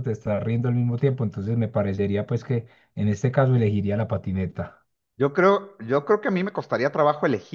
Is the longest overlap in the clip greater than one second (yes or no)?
no